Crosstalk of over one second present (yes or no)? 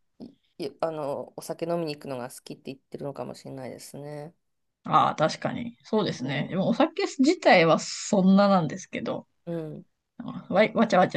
no